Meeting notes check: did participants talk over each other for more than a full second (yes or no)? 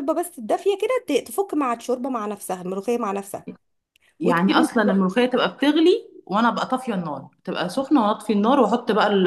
no